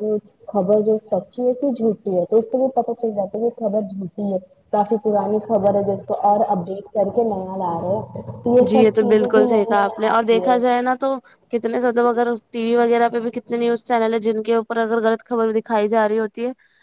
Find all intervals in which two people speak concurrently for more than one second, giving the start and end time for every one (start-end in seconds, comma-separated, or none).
8.7-10.6